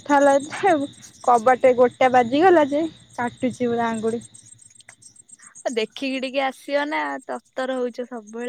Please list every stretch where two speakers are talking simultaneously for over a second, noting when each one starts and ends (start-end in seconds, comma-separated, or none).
none